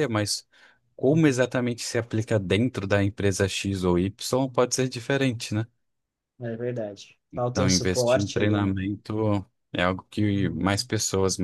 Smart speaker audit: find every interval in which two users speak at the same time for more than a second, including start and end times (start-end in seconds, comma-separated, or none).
7.3-8.7